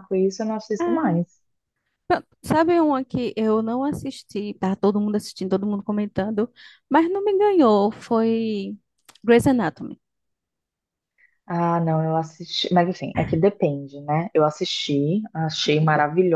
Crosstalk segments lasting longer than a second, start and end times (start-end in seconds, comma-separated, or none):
none